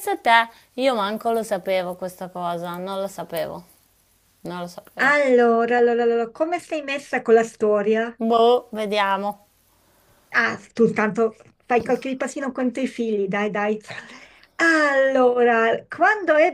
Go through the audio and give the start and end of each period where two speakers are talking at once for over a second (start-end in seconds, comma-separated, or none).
none